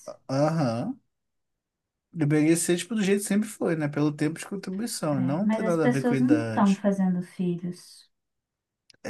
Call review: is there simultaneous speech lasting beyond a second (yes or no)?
yes